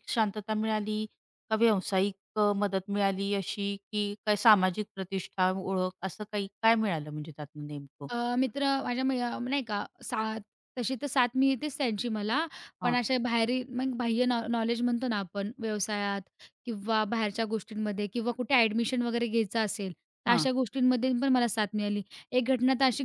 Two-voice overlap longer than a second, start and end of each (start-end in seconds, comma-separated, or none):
none